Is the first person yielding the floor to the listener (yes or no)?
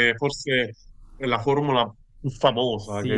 yes